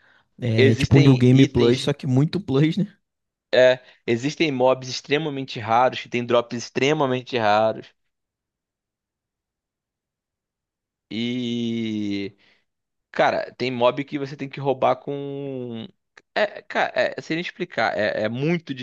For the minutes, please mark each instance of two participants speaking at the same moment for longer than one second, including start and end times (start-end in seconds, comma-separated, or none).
0.6-1.9